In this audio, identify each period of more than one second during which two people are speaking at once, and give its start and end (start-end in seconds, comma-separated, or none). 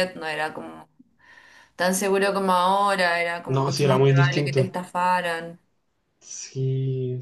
3.5-4.8